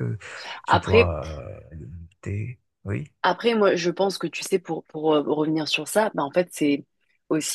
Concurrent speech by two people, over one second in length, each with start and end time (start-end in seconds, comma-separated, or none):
none